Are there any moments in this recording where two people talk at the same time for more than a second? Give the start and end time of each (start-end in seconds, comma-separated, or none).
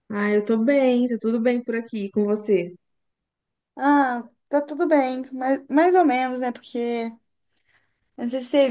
none